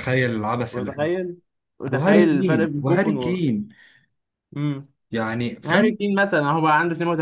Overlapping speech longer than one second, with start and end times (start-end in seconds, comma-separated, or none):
1.9-3.4